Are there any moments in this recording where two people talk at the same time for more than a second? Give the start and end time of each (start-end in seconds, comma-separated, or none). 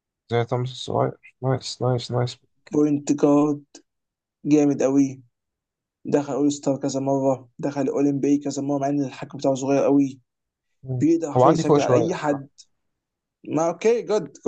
11.0-12.5